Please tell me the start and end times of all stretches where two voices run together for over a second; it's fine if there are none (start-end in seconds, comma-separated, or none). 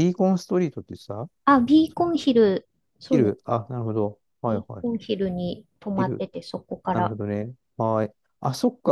none